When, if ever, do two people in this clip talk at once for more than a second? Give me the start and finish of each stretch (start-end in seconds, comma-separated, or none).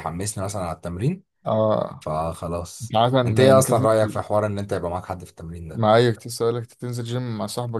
2.8-4.2